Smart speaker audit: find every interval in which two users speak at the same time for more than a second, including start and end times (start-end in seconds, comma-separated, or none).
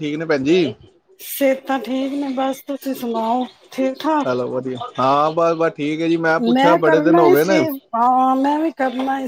none